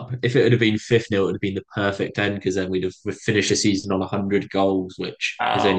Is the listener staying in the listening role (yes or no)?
yes